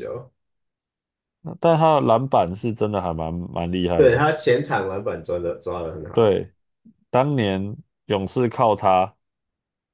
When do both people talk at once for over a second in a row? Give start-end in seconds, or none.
none